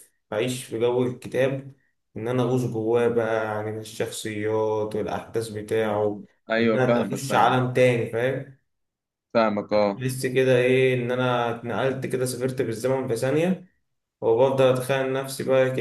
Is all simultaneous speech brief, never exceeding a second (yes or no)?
no